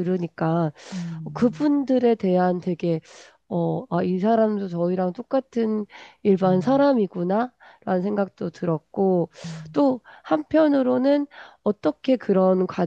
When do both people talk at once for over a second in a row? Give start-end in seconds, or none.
none